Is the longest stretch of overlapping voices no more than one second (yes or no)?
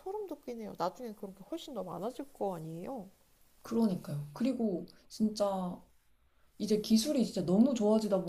yes